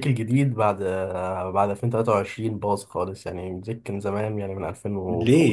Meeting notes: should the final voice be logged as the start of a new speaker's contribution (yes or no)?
yes